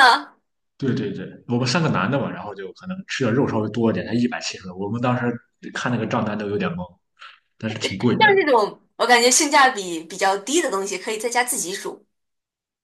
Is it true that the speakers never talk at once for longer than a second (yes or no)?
yes